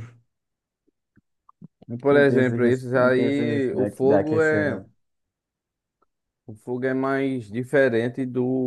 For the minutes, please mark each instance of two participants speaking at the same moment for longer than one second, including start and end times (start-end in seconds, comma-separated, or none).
2.1-4.8